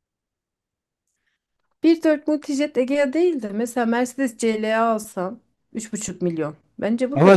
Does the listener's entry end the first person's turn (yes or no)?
yes